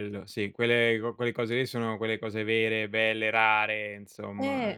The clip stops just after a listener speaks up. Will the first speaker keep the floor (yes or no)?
no